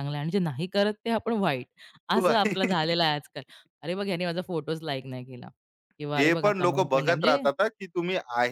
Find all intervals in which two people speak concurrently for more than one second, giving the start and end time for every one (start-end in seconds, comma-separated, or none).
6.2-7.5